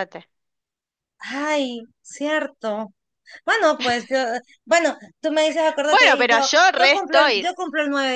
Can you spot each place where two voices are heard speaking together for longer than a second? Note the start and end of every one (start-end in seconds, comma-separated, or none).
5.9-7.5